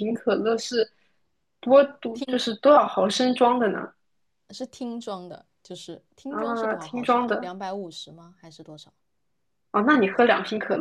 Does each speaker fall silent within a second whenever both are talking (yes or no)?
no